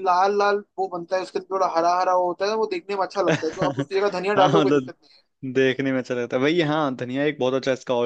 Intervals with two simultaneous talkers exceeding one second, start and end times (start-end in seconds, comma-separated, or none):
3.3-4.9